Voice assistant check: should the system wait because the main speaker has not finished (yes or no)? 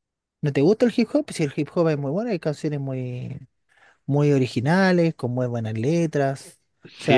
no